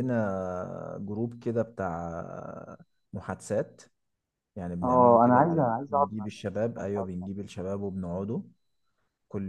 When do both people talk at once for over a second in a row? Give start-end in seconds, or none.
4.8-7.3